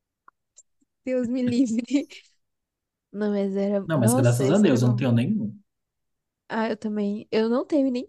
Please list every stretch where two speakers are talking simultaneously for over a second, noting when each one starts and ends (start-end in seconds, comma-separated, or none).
3.9-5.1